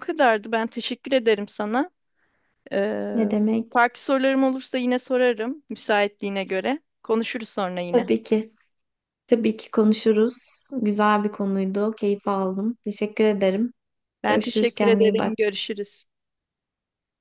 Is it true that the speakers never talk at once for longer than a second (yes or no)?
no